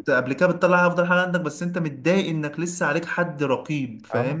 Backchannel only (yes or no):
no